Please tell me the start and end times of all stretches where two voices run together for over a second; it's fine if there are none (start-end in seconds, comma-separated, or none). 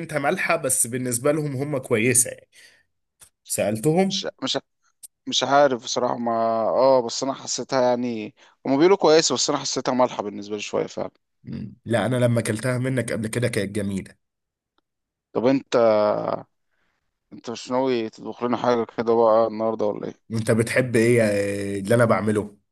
none